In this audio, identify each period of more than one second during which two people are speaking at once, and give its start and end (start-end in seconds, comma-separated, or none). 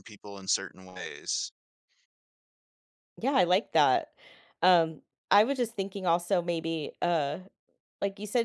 none